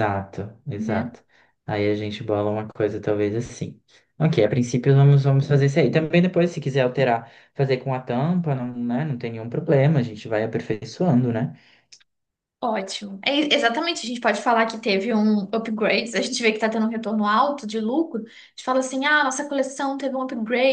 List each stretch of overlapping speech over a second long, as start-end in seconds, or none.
none